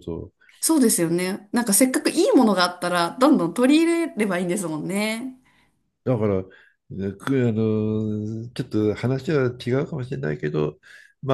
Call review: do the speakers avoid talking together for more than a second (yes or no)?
yes